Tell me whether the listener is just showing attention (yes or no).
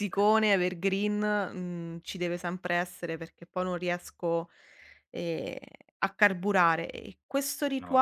yes